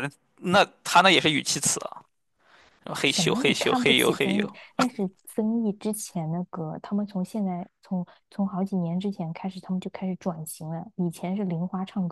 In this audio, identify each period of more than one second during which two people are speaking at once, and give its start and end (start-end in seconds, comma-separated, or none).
3.0-4.6